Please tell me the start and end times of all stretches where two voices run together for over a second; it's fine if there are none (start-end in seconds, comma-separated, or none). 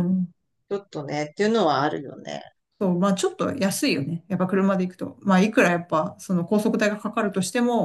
none